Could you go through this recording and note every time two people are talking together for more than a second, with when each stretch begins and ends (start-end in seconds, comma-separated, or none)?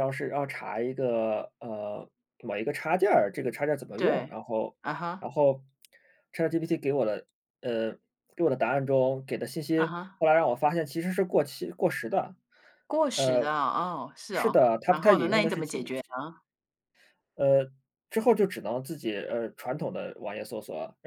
14.3-15.8